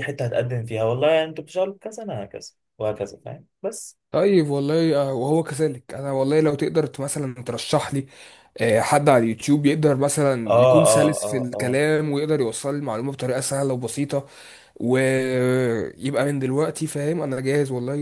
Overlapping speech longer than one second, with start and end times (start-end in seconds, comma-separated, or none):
10.5-11.8